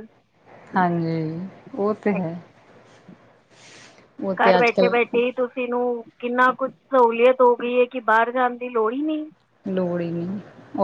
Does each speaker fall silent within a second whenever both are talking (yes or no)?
yes